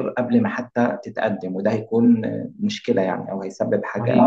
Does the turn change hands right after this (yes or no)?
yes